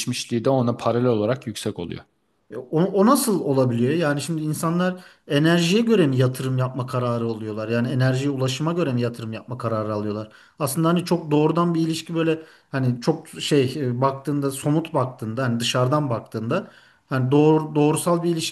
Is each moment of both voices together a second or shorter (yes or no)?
yes